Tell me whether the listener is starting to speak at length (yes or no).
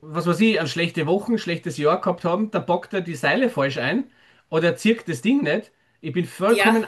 no